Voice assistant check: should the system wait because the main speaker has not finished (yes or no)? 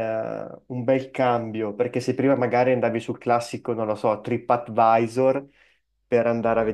yes